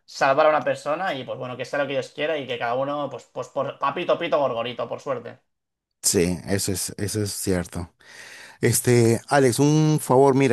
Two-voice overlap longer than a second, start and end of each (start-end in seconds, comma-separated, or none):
none